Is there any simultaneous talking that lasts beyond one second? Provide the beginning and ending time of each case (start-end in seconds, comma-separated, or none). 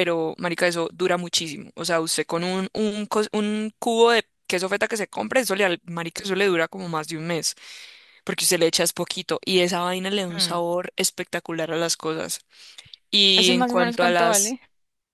13.4-14.6